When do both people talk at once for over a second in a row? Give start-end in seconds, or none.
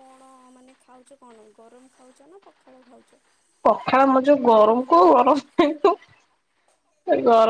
none